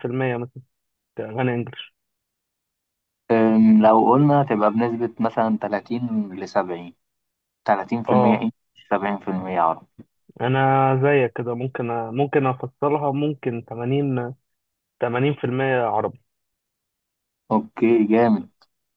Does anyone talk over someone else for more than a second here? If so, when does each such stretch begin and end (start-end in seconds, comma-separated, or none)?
none